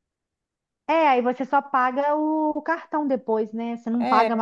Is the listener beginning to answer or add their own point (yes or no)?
no